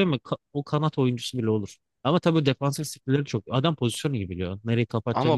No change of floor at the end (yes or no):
no